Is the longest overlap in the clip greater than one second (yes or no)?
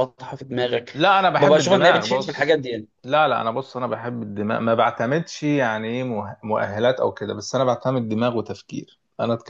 yes